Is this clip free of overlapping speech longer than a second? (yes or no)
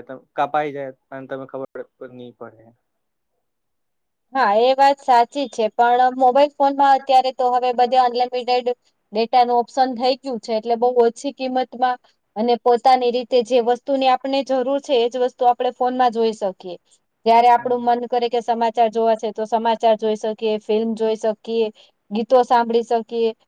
yes